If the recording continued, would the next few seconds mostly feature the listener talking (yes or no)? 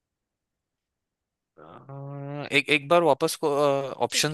yes